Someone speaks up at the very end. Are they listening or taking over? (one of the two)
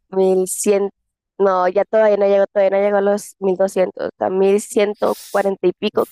taking over